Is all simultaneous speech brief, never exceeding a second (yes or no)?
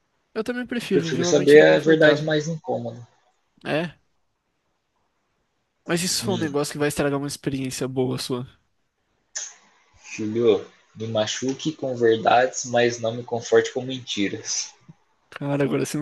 no